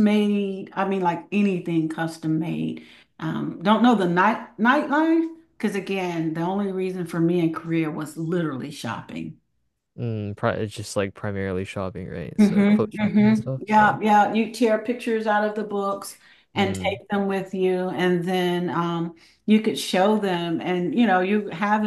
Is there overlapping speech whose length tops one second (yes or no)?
yes